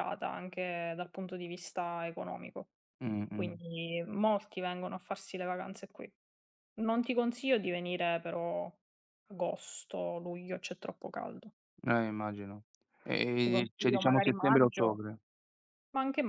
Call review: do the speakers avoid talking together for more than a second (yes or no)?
no